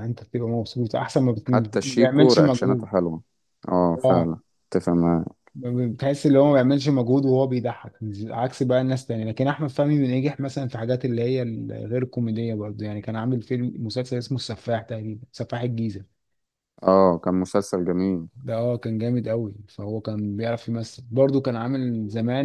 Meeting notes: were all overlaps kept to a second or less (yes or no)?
no